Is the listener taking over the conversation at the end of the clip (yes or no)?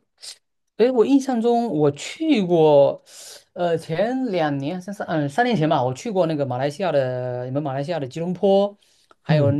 no